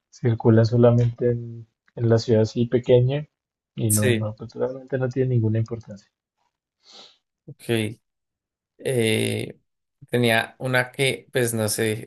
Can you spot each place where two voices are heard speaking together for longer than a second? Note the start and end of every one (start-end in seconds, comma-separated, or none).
none